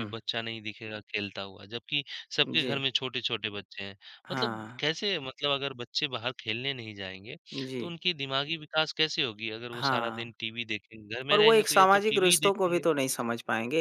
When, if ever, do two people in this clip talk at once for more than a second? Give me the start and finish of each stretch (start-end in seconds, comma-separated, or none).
11.3-12.8